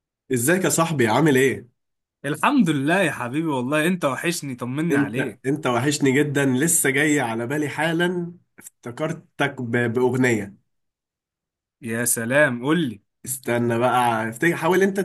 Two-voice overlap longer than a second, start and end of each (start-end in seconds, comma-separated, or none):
none